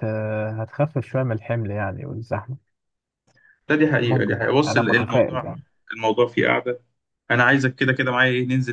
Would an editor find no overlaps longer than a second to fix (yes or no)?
no